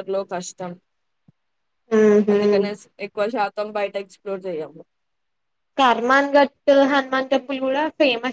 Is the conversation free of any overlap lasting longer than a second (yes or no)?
yes